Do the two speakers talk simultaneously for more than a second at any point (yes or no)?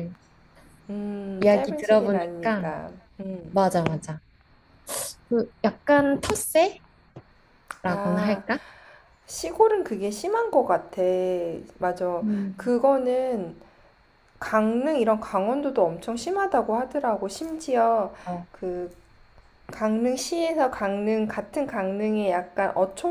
yes